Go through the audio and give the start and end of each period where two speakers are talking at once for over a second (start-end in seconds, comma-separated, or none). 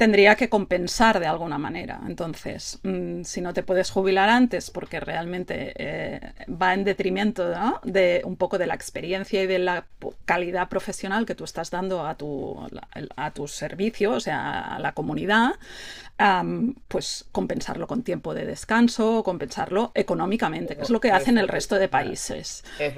20.7-22.2